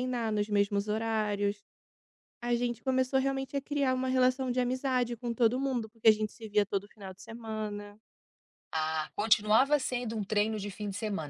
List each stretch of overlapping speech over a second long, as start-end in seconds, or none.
none